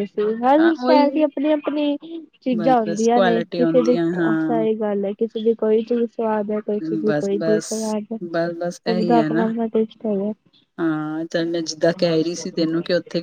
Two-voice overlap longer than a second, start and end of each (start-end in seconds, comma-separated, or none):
2.6-4.7